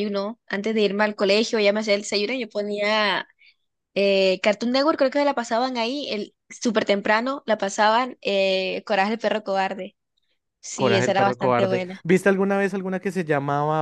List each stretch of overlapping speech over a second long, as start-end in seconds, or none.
10.7-11.9